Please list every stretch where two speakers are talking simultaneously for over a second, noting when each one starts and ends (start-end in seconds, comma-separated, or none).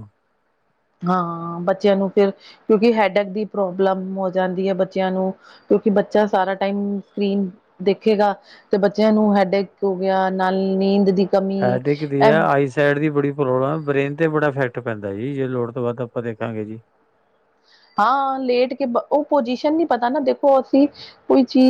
none